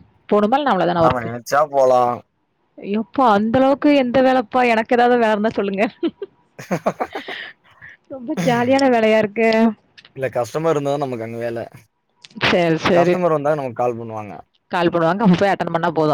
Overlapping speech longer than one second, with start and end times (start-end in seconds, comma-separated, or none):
none